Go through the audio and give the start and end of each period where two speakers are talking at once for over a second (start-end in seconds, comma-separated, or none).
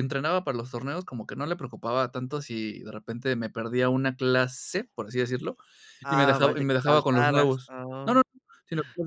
6.1-8.2